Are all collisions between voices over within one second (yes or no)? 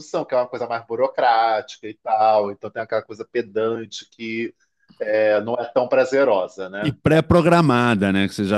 yes